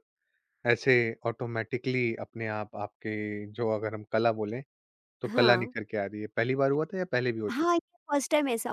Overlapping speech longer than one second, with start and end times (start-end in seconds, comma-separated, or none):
none